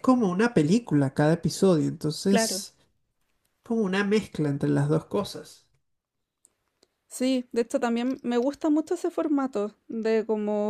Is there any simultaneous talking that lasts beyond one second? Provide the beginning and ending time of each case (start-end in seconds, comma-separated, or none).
none